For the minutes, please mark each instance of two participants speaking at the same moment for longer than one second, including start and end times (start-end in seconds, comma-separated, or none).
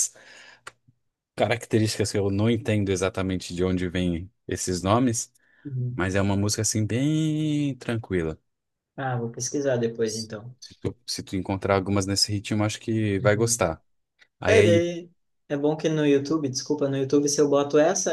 none